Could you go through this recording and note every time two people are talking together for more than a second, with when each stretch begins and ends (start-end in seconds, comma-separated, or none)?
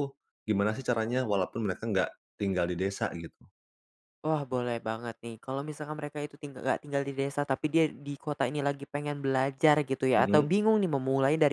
none